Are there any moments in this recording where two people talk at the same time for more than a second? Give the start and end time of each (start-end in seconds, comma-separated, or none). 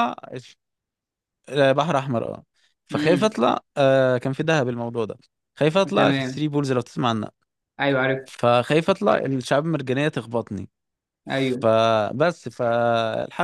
none